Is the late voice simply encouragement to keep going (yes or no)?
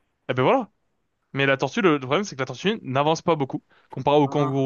yes